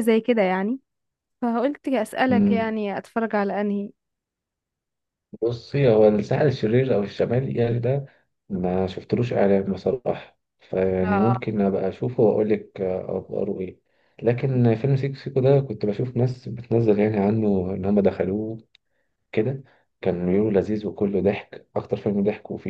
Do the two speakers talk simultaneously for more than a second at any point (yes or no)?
no